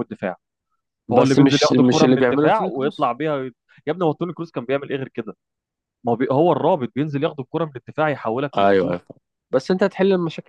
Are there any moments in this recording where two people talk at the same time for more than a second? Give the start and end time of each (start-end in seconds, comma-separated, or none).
1.1-3.1